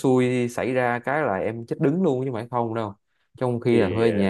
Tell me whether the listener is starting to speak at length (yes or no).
no